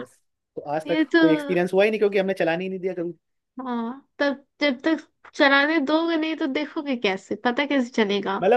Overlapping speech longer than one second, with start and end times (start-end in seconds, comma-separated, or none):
none